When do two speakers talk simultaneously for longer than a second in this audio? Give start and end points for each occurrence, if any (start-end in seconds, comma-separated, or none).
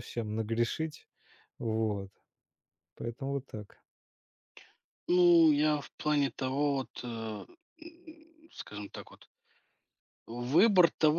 none